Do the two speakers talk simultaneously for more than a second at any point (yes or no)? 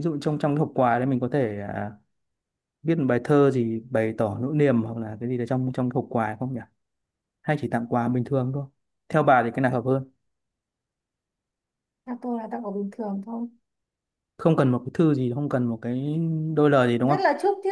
no